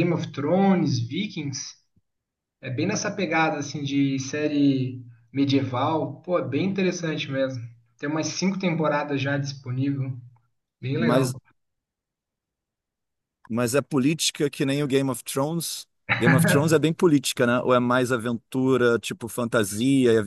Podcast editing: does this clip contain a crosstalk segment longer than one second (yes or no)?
no